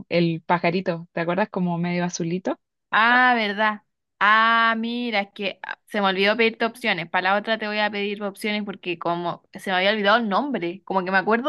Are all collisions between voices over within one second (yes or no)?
yes